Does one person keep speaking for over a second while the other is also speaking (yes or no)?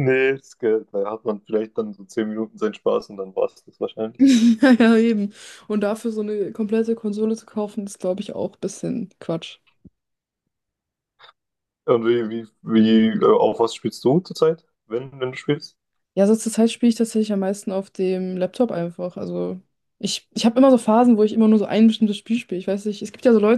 no